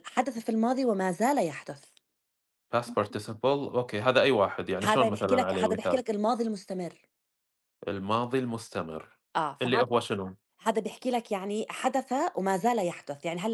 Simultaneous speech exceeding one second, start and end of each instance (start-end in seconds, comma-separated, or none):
4.8-6.0